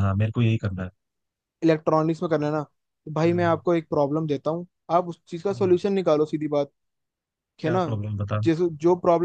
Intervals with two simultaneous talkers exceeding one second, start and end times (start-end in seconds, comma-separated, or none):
none